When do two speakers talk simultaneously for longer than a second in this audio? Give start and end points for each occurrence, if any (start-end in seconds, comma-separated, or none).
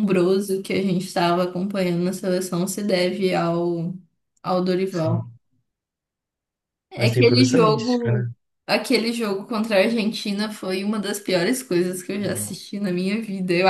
7.0-8.3